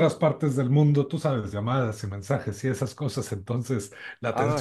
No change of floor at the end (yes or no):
yes